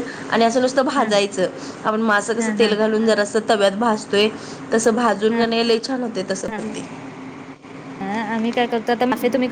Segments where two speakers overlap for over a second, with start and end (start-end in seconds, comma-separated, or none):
none